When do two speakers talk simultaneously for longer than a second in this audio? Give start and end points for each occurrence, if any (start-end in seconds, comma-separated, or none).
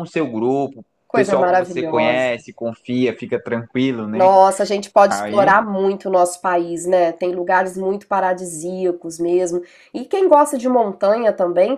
1.1-2.3